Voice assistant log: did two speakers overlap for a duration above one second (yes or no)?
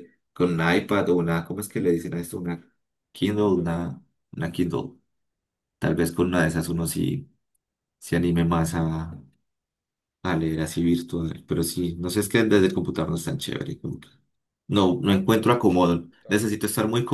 yes